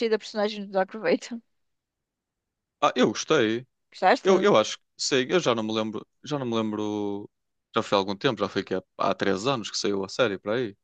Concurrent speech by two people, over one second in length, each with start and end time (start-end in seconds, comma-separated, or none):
none